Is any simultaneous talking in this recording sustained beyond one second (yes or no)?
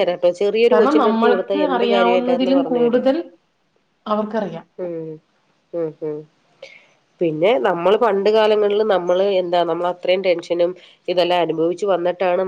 yes